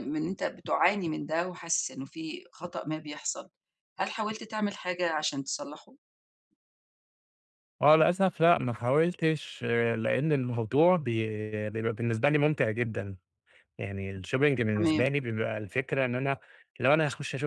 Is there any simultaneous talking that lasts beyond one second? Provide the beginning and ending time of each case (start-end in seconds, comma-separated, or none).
none